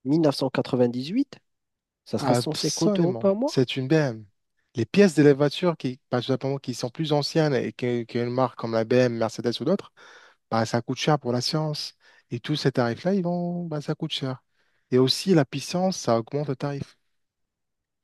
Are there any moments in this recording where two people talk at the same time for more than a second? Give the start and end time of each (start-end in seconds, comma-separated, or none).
2.2-3.6